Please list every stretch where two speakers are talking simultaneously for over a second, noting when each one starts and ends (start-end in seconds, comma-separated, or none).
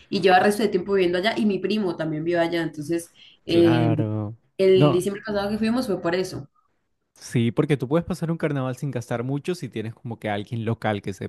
none